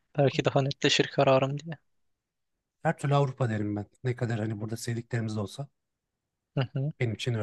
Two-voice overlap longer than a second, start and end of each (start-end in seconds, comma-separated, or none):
none